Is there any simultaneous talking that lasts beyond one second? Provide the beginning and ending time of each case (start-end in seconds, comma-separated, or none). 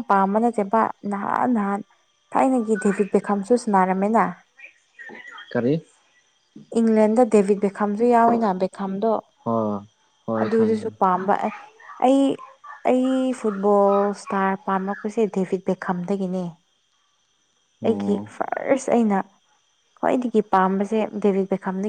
none